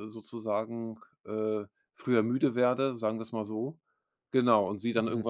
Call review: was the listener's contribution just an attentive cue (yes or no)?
yes